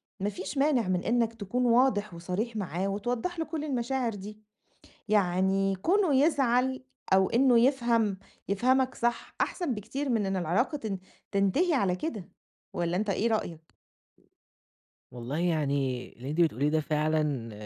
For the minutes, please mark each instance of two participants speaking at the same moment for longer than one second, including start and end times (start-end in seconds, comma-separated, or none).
none